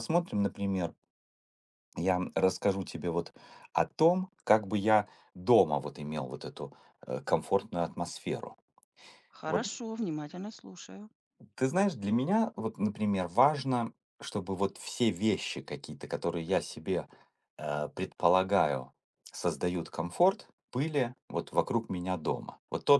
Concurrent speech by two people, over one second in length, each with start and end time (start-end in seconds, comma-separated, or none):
none